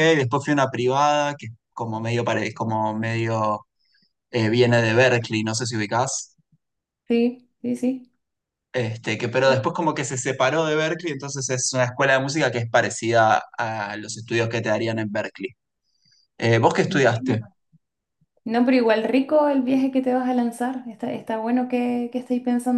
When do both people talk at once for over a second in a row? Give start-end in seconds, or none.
none